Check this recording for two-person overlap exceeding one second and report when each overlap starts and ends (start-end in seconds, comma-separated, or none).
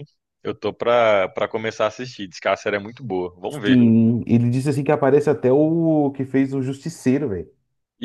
none